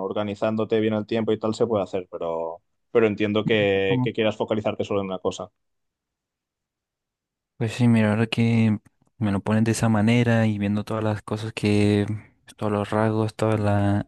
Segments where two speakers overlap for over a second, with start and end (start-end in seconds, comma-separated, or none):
none